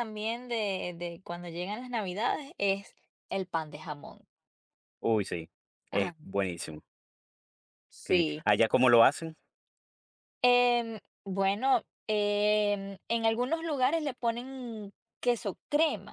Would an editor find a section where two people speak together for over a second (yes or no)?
no